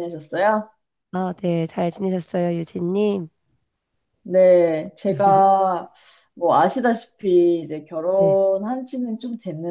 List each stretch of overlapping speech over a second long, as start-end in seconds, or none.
none